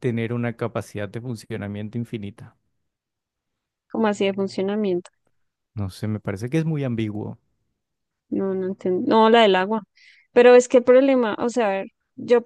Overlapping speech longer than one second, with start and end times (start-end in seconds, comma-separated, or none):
none